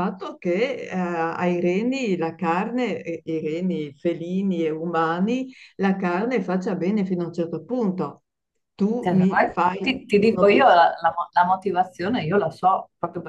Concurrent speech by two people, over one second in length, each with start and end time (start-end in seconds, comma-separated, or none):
9.0-10.9